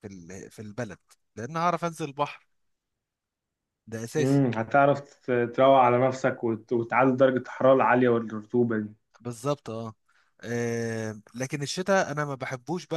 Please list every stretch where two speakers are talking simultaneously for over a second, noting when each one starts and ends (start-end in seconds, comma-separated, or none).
none